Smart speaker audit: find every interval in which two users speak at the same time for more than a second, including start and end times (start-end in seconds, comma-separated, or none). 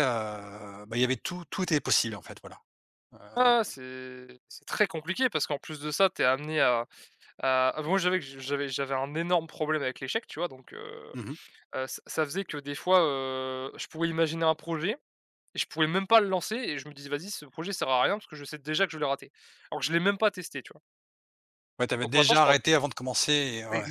none